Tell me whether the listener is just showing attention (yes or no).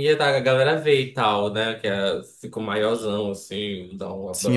no